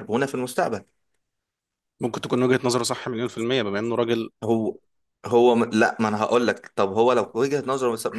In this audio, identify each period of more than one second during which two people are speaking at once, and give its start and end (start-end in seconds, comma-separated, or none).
none